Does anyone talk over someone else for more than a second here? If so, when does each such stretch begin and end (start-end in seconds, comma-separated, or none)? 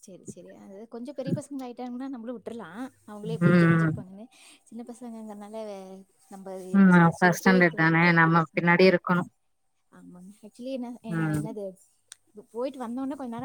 6.8-8.8